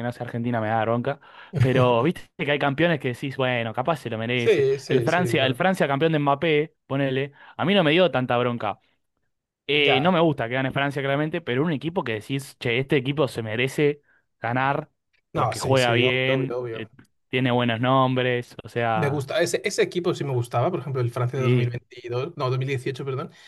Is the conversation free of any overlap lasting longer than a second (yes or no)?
no